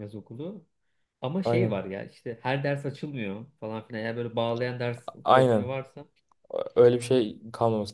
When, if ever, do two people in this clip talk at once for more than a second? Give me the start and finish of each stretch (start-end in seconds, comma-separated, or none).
none